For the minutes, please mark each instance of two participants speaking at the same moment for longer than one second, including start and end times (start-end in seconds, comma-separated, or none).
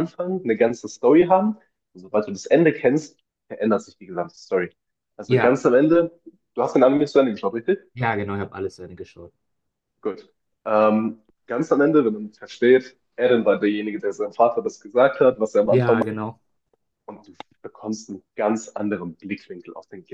none